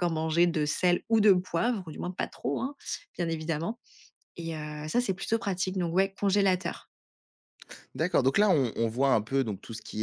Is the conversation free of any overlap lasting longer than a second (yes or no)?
yes